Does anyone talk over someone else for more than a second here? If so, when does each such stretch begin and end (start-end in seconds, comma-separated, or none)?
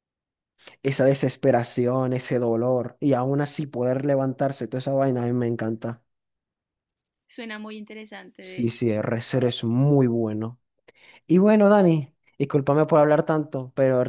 none